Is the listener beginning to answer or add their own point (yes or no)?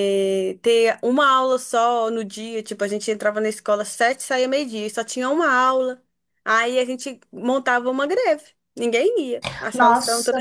yes